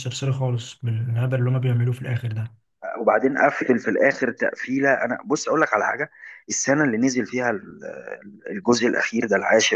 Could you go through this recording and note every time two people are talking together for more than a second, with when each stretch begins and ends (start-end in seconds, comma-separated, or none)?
none